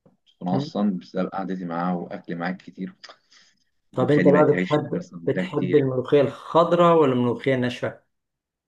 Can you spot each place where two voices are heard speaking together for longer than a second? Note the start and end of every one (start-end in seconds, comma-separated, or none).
3.9-5.8